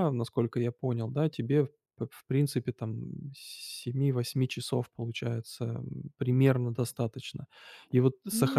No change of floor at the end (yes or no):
yes